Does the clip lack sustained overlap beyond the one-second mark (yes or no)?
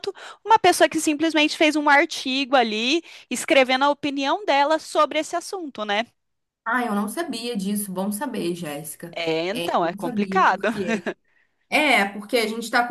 no